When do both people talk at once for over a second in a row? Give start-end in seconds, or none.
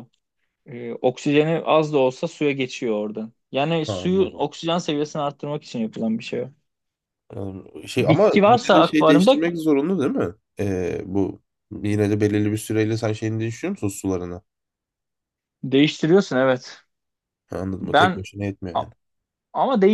8.1-9.4